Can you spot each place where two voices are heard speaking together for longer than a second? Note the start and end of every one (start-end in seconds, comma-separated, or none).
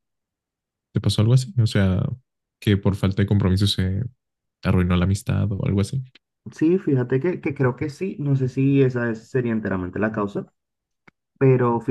none